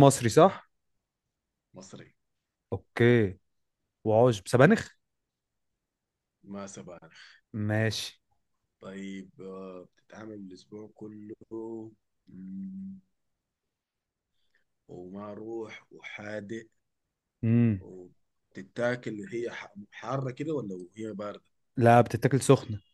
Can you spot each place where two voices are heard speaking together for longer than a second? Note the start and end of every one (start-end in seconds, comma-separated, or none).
none